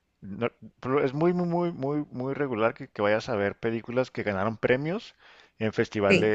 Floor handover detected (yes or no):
no